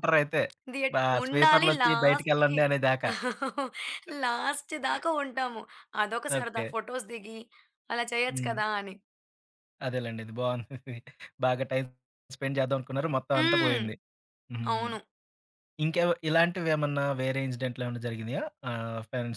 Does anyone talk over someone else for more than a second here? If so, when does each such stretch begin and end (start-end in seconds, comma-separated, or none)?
0.9-2.6